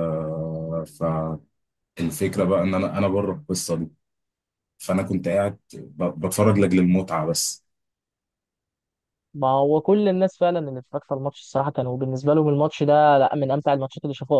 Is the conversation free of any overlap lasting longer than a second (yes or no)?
yes